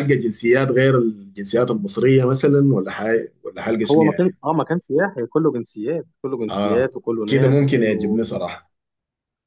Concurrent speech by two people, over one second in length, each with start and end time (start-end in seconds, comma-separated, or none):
6.5-8.2